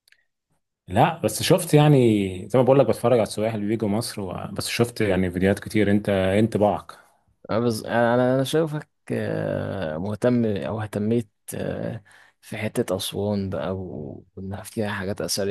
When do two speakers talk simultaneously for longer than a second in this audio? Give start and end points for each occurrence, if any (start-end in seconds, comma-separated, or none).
none